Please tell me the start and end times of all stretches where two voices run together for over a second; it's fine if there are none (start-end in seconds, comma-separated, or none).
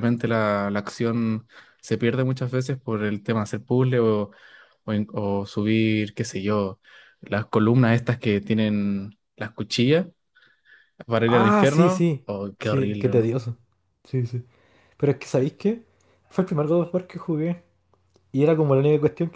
11.2-13.3